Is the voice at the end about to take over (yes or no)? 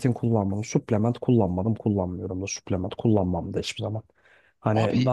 no